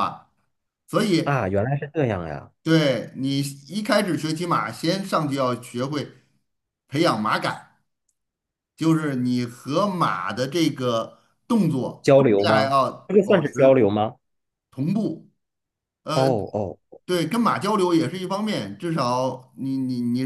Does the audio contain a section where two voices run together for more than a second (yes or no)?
yes